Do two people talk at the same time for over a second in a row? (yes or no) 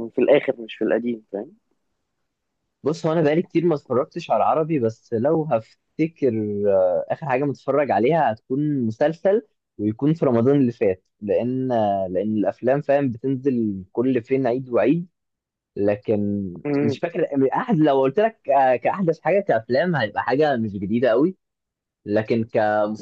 no